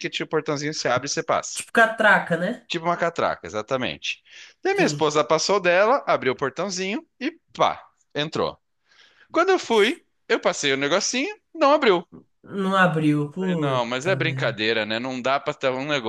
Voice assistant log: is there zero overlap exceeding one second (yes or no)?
no